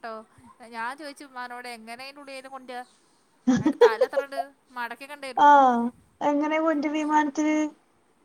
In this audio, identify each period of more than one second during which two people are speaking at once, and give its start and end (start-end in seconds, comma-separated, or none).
none